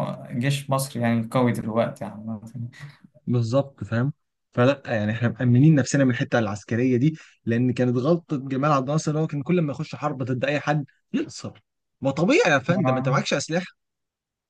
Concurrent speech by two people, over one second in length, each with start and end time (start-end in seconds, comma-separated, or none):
none